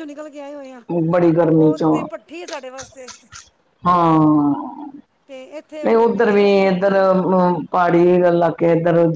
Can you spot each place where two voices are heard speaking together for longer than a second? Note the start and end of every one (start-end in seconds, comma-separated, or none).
none